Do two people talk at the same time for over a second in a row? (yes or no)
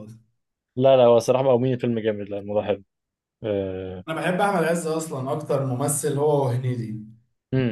no